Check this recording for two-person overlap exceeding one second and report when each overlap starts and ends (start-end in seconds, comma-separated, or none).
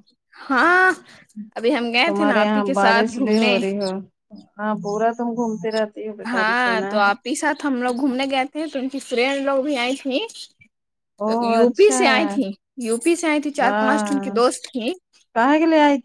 2.0-3.6